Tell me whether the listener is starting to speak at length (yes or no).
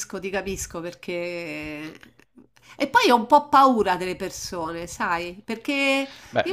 no